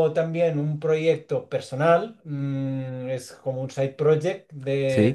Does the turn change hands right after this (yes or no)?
no